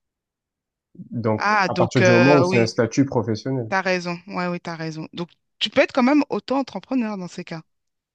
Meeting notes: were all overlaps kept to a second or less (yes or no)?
no